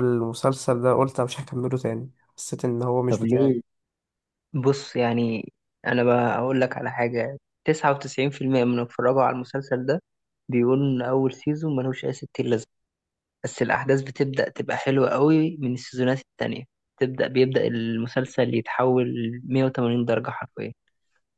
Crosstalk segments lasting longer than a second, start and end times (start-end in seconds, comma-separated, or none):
none